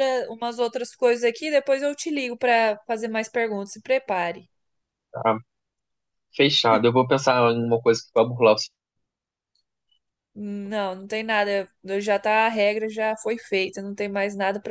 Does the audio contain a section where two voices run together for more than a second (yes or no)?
no